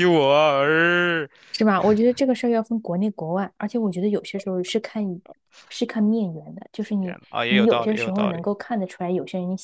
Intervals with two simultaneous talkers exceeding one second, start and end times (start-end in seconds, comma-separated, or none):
7.0-8.5